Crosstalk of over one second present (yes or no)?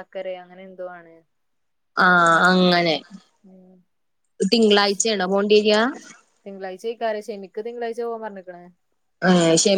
no